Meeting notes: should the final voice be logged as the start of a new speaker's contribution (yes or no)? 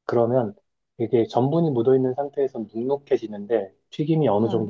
no